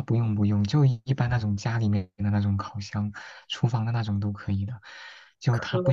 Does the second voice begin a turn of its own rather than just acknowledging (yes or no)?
no